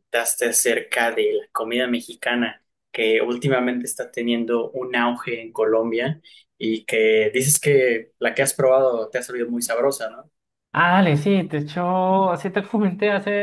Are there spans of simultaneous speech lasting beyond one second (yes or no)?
no